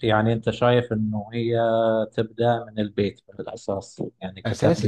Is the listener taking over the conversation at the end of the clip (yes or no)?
yes